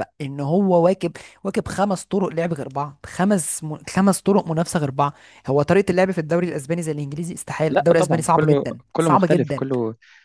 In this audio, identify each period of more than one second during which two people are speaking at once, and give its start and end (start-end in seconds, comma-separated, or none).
7.7-9.7